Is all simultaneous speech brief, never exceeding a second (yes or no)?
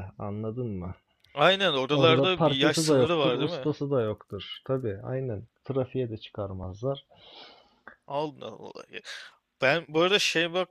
no